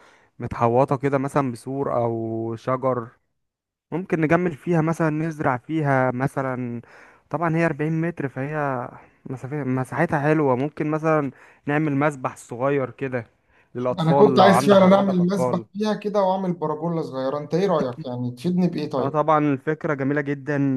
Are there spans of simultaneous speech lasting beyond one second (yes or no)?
yes